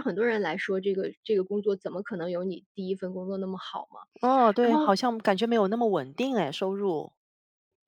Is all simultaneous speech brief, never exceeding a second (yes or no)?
yes